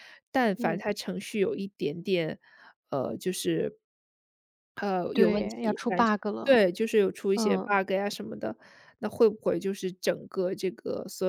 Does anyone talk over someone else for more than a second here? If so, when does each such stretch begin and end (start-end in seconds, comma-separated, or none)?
5.1-6.6